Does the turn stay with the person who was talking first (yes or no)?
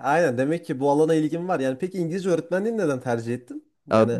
no